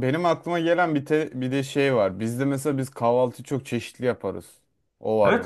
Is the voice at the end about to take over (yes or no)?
yes